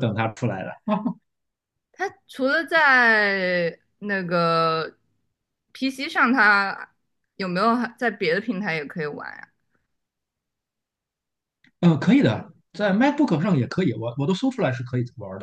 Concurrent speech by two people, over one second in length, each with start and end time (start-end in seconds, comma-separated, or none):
none